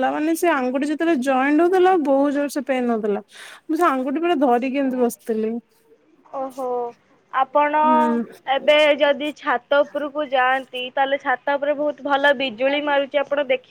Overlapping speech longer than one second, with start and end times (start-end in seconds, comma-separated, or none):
none